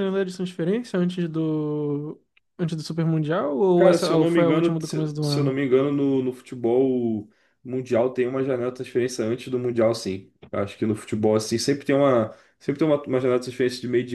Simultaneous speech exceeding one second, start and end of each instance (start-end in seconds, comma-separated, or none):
3.8-5.6